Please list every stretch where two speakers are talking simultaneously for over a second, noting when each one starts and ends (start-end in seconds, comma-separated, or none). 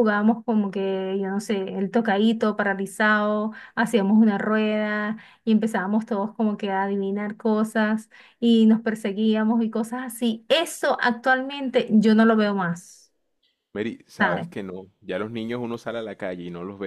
none